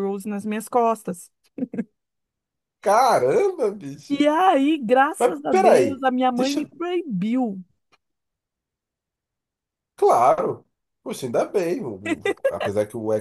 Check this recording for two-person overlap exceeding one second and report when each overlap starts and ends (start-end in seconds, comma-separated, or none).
5.2-6.7